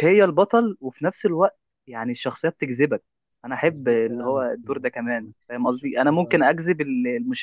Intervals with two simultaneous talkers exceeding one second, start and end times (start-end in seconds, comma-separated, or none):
3.7-6.4